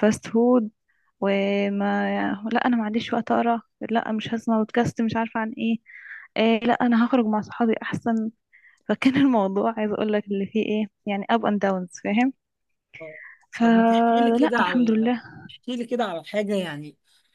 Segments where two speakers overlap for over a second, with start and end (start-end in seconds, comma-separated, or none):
13.6-15.1